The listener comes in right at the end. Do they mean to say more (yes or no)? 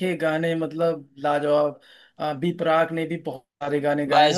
yes